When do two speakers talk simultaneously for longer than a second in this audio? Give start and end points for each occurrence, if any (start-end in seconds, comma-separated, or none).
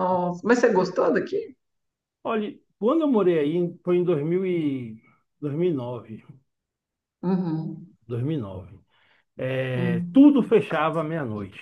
none